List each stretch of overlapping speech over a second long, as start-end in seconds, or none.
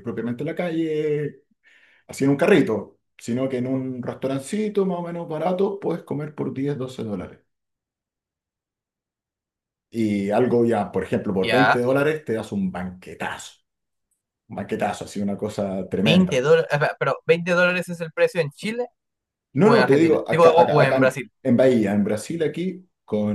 19.6-21.3